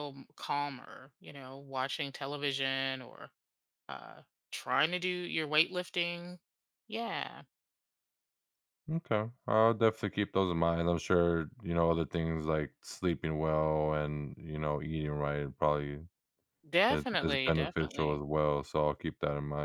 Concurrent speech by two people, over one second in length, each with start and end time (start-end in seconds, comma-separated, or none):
16.9-18.2